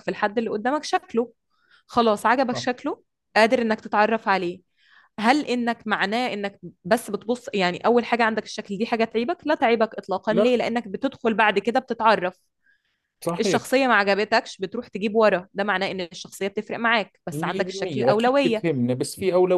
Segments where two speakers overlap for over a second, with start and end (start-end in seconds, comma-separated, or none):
17.3-18.6